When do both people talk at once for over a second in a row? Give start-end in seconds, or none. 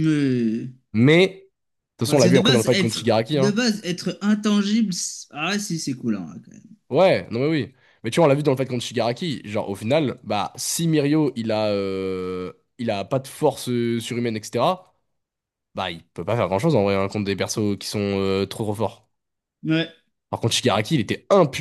2.0-3.6